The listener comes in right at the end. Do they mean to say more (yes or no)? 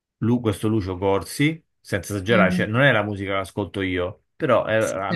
no